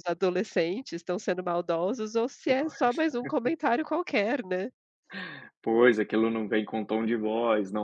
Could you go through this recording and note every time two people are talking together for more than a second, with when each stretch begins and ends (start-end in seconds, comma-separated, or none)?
none